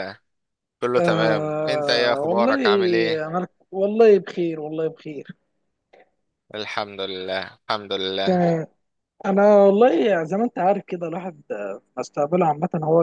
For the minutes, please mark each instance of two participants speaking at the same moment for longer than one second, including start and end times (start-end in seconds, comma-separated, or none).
1.0-2.6